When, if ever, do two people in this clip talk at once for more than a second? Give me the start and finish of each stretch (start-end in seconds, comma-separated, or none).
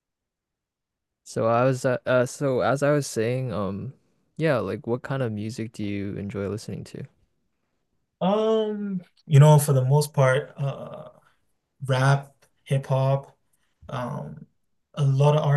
none